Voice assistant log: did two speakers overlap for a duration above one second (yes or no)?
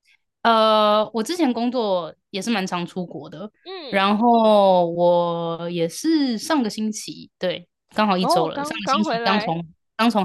yes